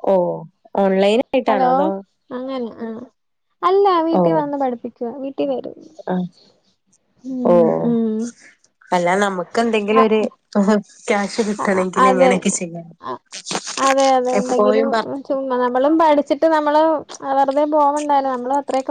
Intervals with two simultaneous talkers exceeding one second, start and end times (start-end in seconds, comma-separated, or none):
none